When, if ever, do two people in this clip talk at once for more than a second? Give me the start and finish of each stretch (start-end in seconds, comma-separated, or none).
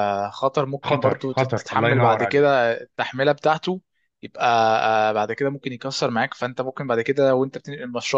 0.9-2.6